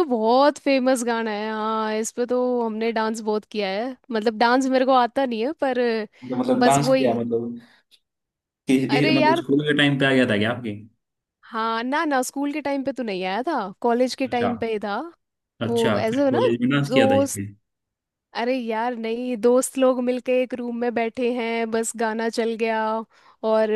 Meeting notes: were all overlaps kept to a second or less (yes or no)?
no